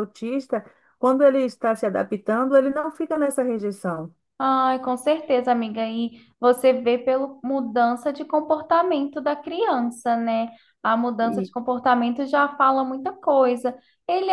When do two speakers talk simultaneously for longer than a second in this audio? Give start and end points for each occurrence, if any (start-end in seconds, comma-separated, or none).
none